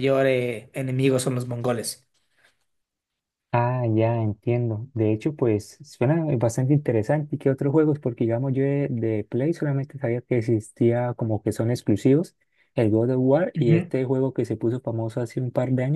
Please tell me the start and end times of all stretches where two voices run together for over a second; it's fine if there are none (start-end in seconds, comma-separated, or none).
none